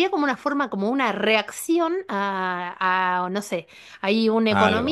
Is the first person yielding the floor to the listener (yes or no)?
no